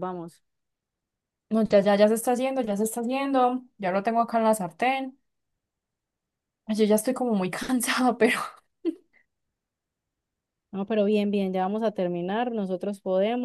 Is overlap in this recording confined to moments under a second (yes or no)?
yes